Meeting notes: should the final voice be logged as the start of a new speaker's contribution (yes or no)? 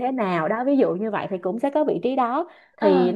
no